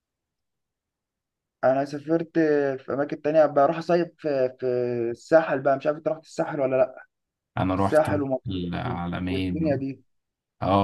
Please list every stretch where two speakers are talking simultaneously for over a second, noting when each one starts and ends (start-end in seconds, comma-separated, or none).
7.8-9.8